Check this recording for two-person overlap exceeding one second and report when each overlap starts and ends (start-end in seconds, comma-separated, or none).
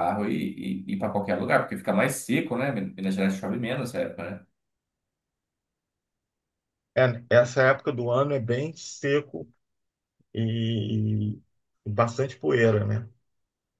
none